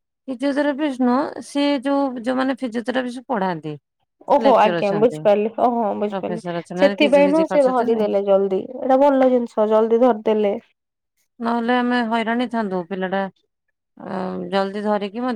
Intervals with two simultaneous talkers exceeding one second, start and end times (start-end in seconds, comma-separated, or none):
6.1-8.0